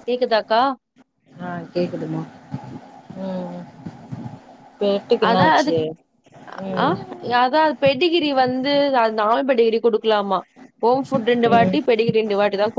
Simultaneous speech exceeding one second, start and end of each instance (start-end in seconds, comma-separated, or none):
none